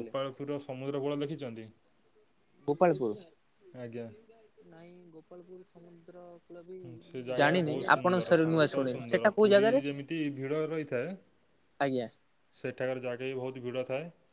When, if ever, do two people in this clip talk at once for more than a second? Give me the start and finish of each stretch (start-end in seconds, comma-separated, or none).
6.8-9.8